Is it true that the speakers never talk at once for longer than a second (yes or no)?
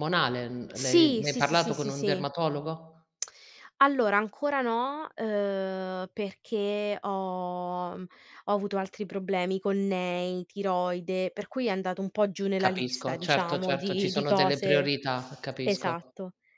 no